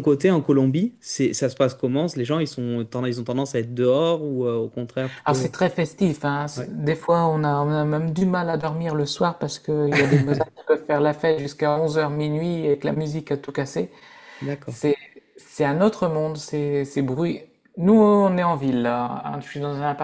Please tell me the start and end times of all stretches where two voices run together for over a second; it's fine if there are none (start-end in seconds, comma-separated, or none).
none